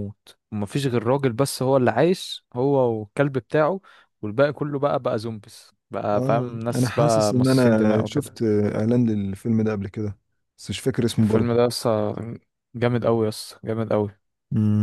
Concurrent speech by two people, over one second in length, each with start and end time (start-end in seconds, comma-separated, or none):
6.2-8.4